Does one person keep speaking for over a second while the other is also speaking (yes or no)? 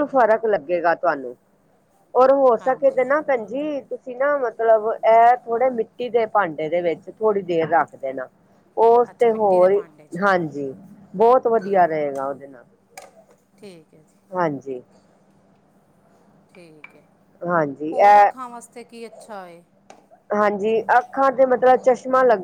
no